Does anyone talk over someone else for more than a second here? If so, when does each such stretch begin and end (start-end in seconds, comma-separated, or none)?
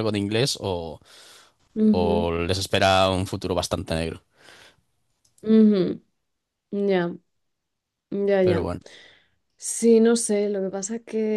none